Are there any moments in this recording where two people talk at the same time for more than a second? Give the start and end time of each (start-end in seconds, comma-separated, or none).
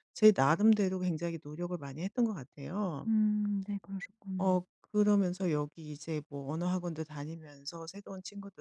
none